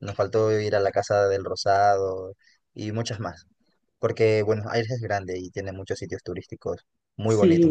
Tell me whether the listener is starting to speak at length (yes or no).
yes